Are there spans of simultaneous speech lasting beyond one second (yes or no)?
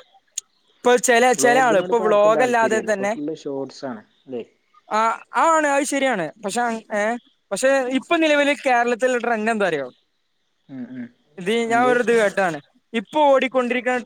yes